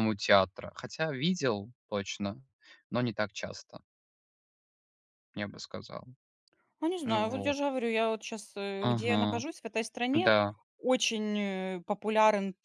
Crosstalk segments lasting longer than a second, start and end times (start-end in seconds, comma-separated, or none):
none